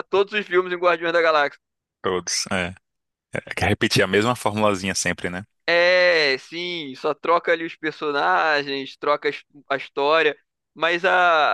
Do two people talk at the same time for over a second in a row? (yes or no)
no